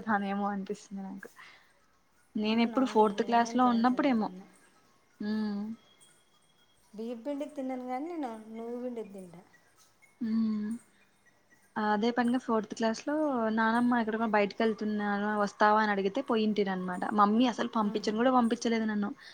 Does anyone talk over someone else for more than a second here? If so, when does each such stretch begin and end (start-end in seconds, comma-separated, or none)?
2.5-4.3